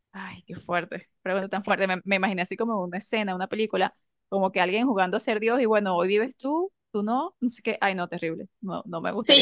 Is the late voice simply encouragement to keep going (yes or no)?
no